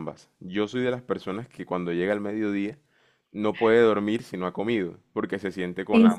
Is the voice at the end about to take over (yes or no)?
no